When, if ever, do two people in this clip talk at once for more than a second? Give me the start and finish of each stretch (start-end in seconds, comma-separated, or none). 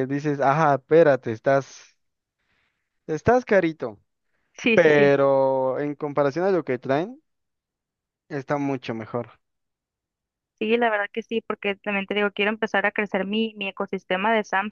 none